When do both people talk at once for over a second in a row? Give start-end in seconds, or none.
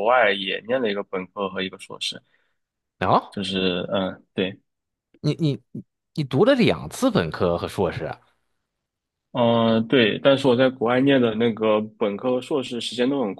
none